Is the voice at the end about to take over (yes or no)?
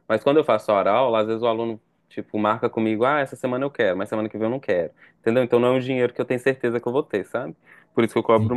no